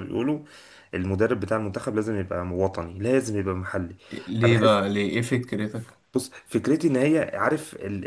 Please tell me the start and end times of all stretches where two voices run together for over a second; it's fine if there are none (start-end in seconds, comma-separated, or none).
none